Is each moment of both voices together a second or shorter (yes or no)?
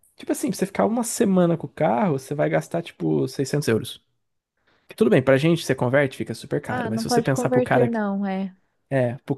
no